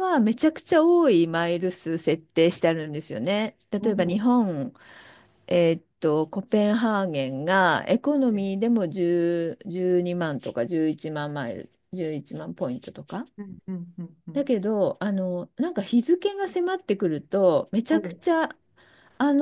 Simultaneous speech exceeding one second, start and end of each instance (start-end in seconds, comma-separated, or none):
none